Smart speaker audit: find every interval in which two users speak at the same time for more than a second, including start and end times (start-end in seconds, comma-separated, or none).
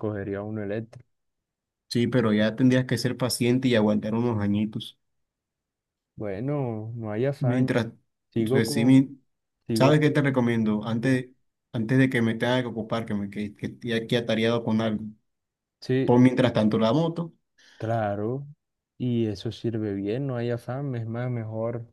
none